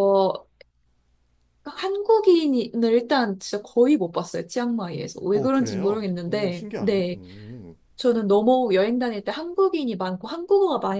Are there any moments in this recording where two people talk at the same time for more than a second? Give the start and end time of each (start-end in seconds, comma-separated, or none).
5.3-7.2